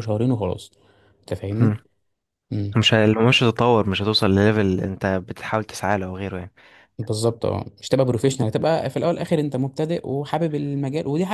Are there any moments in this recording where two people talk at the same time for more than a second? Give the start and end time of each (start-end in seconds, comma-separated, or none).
none